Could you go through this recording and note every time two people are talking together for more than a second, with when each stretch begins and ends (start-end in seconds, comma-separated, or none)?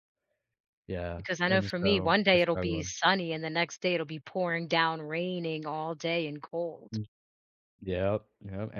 1.1-2.9